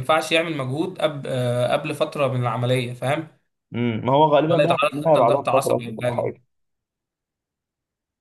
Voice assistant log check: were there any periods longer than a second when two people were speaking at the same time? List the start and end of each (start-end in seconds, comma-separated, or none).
4.5-6.3